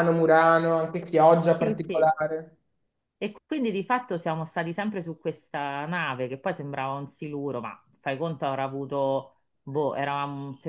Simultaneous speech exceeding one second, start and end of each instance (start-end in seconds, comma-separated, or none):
none